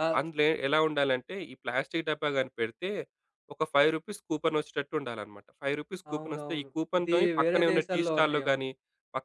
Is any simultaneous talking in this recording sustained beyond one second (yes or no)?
yes